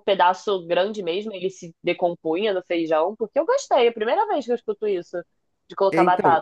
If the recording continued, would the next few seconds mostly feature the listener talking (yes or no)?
yes